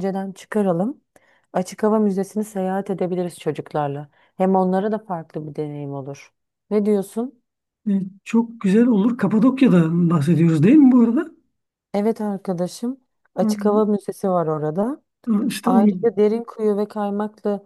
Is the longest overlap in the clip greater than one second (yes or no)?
no